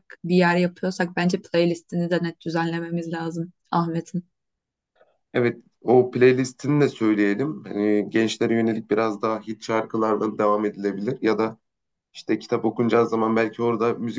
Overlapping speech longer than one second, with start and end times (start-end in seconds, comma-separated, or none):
none